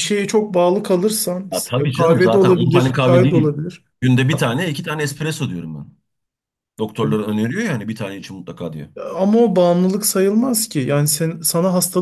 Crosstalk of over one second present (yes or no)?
yes